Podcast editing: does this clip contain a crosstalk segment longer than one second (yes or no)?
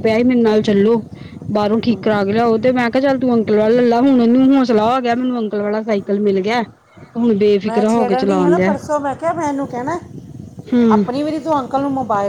no